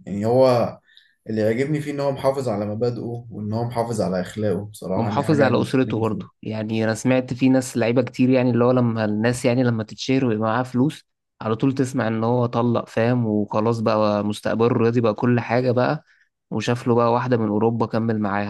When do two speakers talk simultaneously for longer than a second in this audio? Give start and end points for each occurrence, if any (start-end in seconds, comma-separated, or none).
4.9-6.4